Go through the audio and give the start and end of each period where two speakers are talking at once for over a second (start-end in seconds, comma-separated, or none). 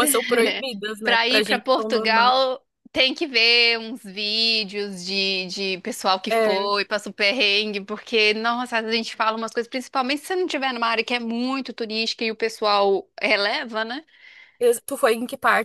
1.0-2.4